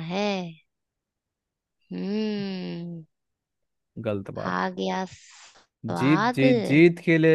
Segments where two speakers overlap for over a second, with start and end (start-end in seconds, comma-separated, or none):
none